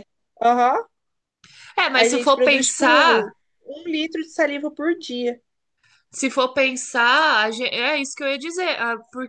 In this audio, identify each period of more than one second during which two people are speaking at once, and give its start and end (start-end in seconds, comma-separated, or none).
1.9-3.2